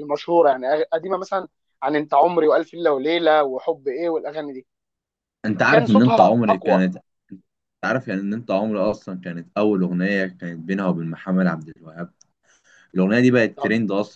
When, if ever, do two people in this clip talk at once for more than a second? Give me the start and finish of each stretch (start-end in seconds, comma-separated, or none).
5.6-6.8